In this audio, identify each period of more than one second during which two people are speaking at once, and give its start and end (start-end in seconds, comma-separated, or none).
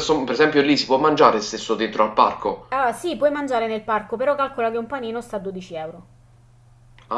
none